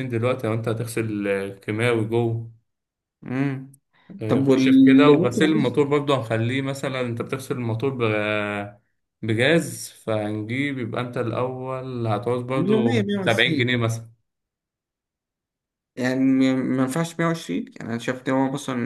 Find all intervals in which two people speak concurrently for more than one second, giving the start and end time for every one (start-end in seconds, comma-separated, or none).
4.3-5.8, 12.6-13.8